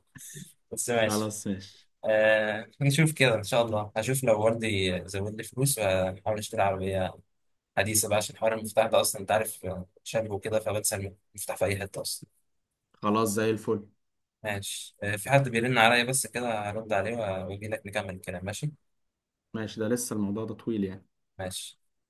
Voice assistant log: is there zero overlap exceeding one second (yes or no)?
yes